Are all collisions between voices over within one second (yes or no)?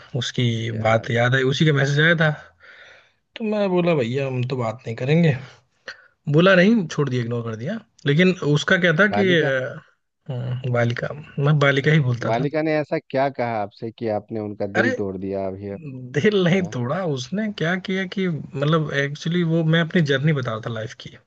yes